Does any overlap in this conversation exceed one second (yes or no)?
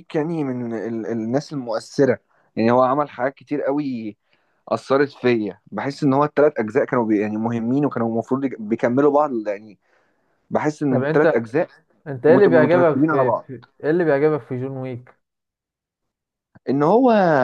yes